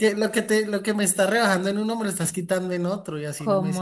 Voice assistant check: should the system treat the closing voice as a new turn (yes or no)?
yes